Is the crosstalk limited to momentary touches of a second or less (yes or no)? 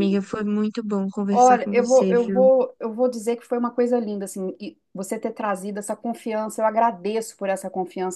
no